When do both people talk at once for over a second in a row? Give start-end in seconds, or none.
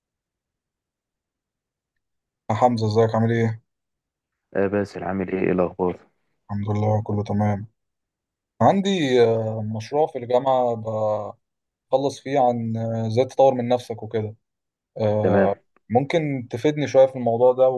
none